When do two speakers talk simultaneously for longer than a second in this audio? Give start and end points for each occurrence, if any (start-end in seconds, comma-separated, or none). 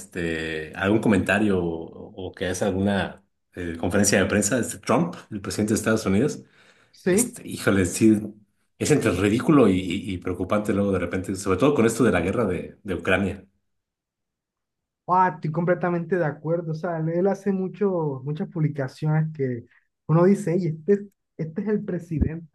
none